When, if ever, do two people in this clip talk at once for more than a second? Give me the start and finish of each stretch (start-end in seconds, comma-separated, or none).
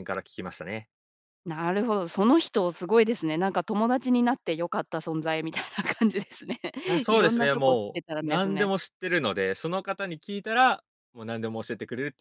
7.1-8.7